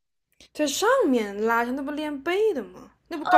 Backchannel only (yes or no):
no